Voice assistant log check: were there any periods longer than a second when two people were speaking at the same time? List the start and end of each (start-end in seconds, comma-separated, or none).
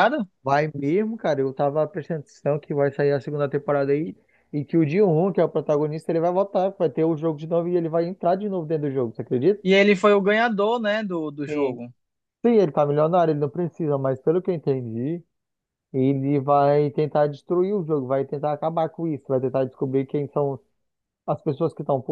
none